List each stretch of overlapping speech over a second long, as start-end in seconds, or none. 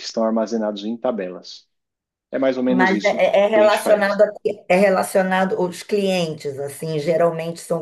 2.7-4.2